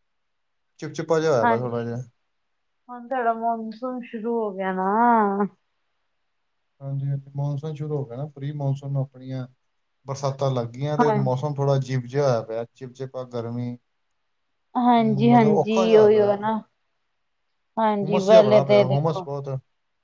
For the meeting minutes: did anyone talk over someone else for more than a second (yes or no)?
yes